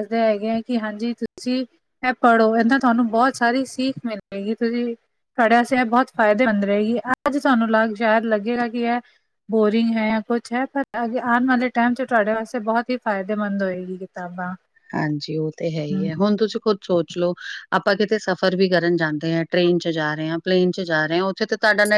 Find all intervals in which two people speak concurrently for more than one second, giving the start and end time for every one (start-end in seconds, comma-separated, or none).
none